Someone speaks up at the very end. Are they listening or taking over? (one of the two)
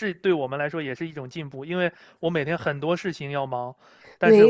listening